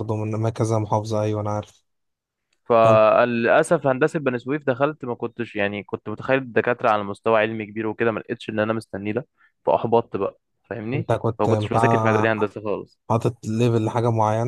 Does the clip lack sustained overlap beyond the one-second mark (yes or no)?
no